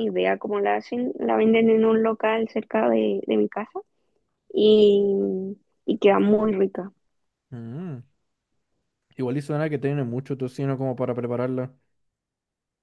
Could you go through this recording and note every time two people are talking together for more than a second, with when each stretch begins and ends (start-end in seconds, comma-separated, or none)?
none